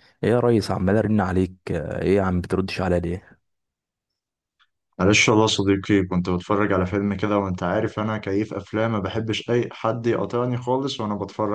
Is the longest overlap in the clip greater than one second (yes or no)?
no